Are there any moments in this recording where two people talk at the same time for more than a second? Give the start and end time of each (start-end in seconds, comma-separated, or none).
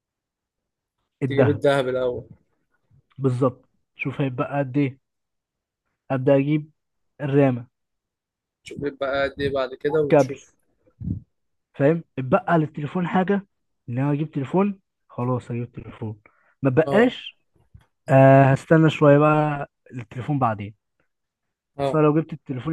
none